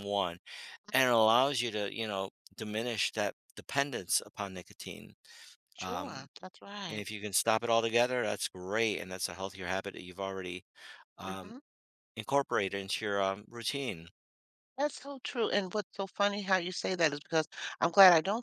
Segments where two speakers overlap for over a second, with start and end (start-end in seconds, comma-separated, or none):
none